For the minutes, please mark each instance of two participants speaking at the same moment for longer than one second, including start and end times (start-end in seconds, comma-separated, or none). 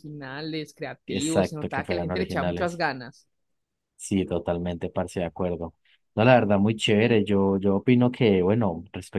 1.1-2.8